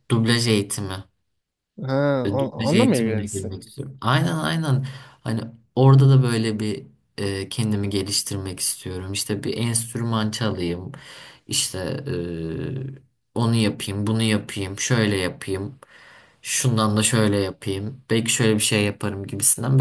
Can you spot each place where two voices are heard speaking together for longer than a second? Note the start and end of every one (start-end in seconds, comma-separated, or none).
2.2-3.5